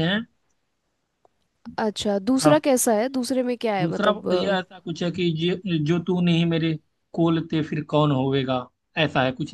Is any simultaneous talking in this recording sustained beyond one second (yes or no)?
no